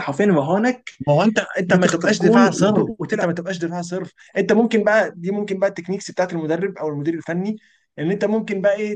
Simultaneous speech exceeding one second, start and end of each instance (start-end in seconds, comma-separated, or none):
1.7-3.3